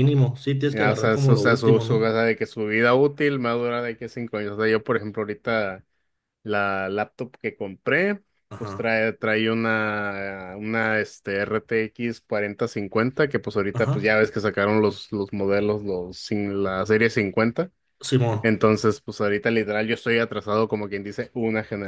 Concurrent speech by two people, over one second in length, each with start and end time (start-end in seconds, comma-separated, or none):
0.7-2.1